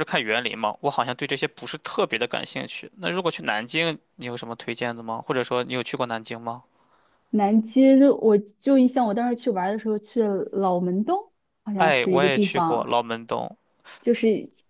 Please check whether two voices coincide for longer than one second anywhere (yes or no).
yes